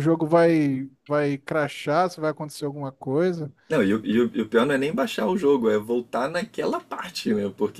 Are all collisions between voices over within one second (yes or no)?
yes